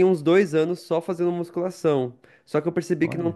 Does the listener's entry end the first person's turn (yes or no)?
no